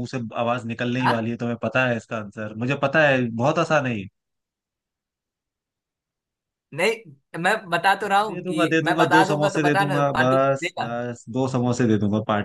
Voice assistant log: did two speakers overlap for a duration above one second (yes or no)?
yes